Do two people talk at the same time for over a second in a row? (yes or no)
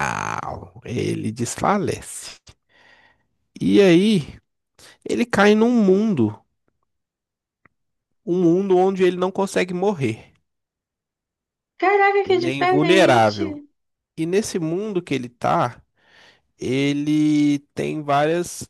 yes